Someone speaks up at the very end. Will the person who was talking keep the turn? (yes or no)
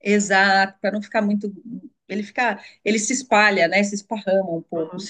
no